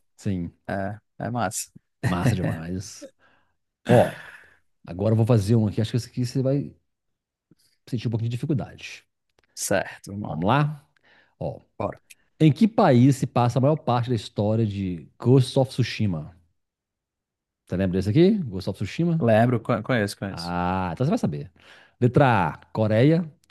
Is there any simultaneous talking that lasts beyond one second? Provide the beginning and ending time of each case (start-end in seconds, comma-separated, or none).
none